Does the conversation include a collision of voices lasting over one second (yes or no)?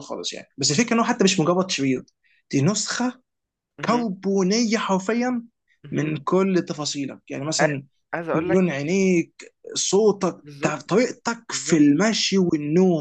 yes